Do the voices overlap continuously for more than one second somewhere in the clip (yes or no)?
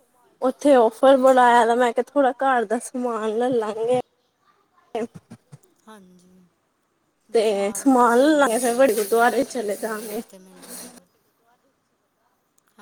yes